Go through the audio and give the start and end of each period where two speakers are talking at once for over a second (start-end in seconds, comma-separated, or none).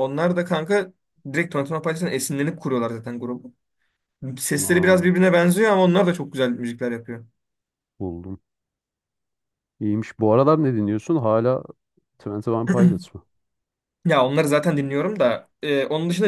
none